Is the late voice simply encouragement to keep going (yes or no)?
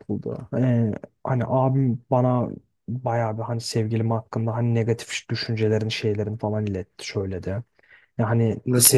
no